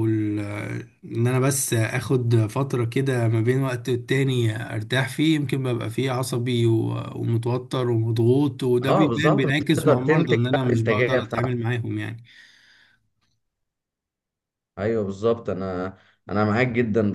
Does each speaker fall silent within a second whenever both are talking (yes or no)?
no